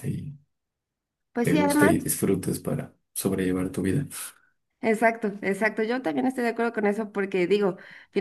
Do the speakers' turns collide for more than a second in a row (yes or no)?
no